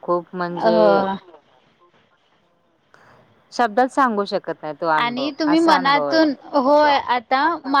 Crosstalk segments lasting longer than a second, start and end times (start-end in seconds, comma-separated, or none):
5.0-6.3